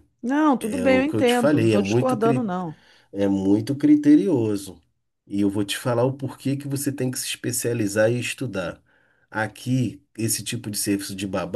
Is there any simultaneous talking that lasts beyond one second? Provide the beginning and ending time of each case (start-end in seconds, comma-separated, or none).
0.6-2.5